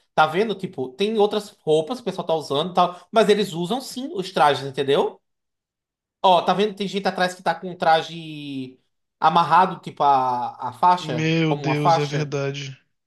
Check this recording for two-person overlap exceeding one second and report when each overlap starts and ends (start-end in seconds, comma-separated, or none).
11.0-12.3